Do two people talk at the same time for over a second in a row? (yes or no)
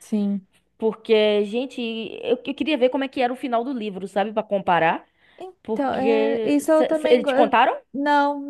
yes